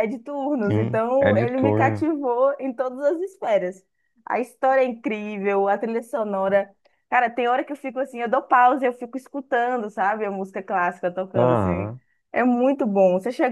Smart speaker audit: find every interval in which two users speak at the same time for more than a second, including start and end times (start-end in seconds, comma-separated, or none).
0.6-2.1